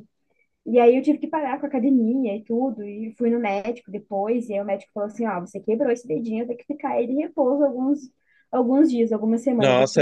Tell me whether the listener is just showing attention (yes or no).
no